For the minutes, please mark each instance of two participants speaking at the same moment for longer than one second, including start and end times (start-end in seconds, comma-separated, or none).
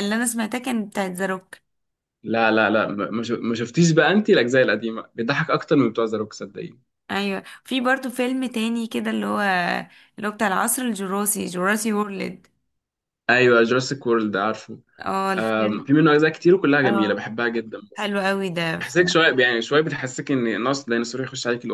none